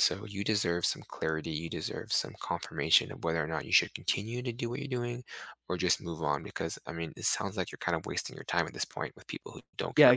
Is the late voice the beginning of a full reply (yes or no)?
yes